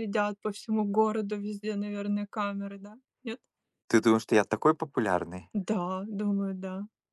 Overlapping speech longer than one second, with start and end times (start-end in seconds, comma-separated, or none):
none